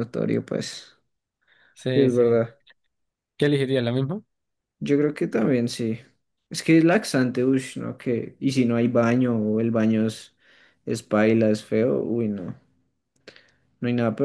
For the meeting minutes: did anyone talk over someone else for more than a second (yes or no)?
no